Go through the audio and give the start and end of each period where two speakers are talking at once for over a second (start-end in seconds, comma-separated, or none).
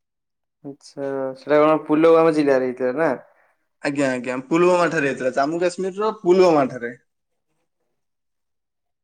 none